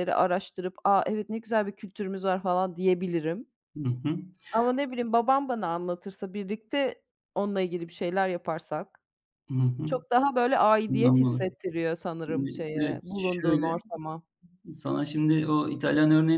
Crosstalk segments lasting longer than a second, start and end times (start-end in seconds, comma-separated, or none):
12.3-13.8